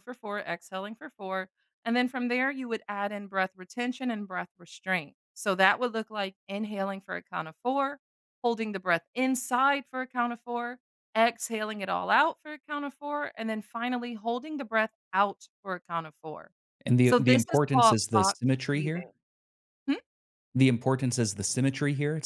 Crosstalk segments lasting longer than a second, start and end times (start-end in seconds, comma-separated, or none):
17.0-19.1